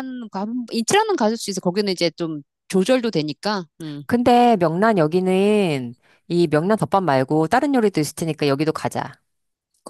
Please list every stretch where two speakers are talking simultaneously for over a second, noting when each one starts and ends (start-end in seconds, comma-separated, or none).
none